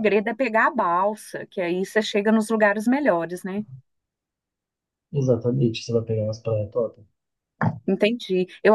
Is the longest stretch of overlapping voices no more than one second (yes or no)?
yes